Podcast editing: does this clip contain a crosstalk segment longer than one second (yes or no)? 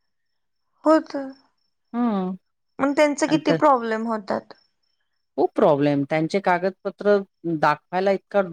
no